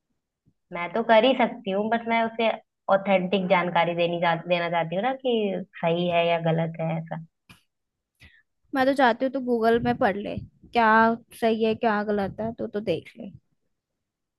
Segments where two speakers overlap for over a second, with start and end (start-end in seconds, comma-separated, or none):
none